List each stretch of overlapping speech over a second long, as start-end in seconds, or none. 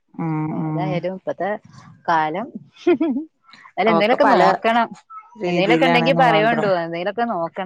5.5-6.7